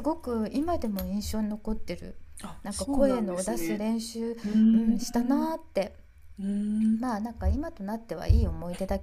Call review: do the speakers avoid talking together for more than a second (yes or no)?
no